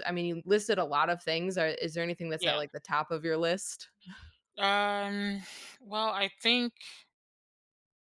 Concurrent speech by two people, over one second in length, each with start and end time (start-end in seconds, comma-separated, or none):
none